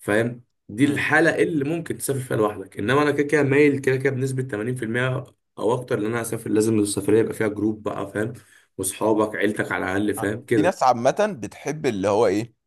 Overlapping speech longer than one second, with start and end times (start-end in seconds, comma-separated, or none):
none